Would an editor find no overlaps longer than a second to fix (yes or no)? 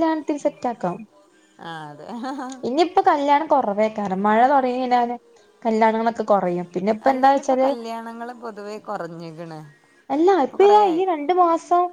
yes